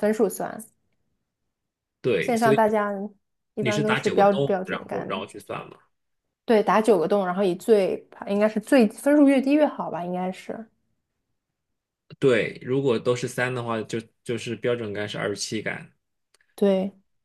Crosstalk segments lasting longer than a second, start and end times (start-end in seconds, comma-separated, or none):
3.6-5.2